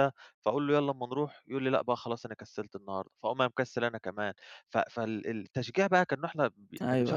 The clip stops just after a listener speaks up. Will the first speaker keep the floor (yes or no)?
yes